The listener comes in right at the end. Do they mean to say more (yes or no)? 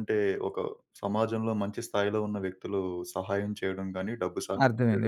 yes